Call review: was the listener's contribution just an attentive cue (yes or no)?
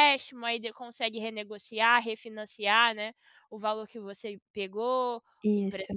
yes